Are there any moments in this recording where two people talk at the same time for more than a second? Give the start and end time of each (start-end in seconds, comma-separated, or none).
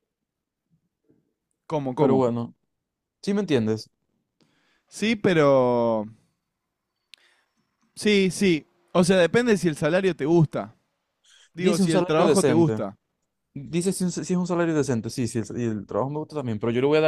11.6-12.8